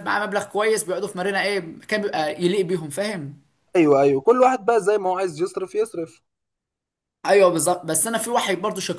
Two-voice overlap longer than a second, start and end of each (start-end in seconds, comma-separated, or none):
none